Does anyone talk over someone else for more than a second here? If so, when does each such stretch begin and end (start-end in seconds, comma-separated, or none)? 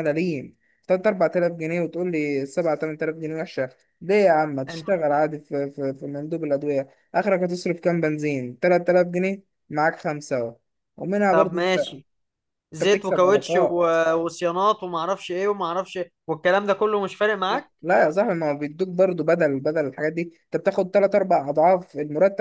12.7-13.9